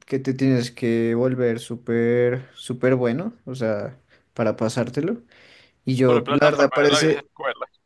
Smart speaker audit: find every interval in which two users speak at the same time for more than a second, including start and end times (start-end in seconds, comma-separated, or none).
6.0-7.3